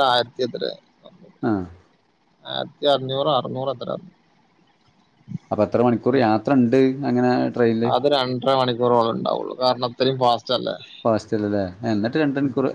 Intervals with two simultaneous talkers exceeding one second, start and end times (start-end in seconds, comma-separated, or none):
none